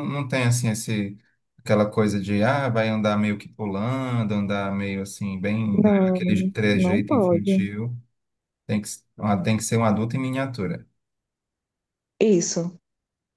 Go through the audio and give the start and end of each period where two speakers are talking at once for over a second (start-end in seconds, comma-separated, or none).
5.8-7.7